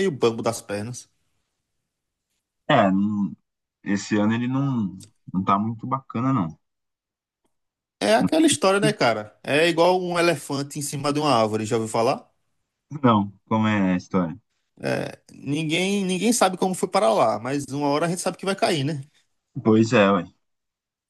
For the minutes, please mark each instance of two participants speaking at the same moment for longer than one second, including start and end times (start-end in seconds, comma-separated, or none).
none